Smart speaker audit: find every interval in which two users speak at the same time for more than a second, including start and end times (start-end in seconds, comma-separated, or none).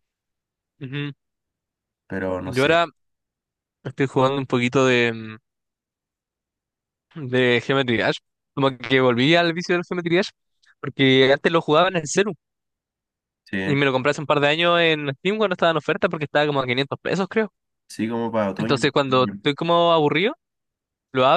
none